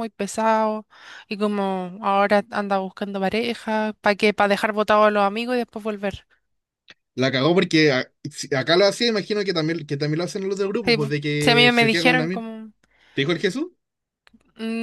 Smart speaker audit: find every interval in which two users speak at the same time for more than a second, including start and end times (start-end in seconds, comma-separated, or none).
10.8-12.4